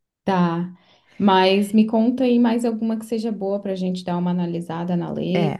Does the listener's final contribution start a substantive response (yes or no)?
yes